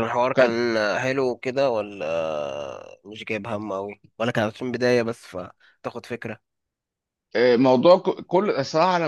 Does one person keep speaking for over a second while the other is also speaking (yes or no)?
no